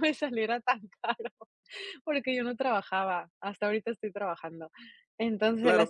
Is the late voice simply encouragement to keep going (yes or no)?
no